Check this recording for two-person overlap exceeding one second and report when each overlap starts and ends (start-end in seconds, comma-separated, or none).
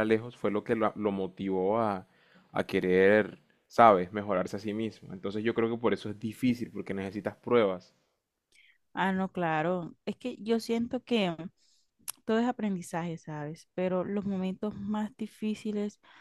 none